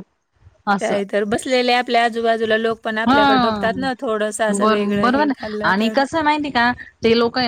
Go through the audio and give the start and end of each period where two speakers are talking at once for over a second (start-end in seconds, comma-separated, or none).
none